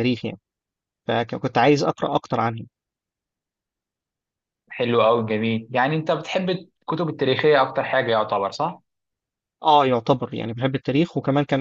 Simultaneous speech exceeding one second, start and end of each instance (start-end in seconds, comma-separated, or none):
none